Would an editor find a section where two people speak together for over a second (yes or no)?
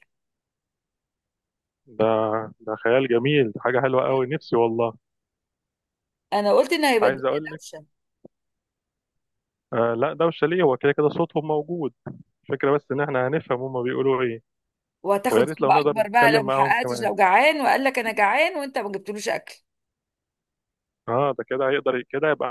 yes